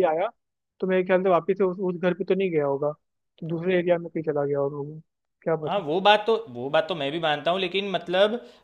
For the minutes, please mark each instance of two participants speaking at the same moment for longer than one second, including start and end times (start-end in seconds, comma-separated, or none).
none